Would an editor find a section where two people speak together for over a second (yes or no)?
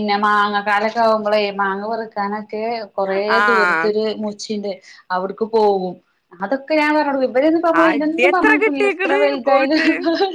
yes